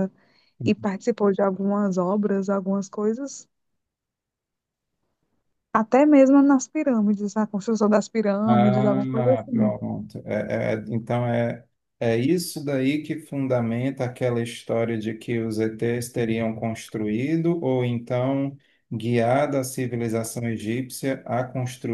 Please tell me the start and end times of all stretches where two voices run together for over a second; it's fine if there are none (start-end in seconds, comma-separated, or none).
8.5-9.7